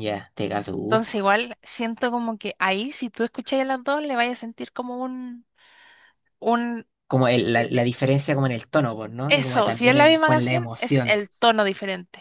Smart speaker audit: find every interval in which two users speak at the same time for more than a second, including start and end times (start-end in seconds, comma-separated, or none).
9.3-11.1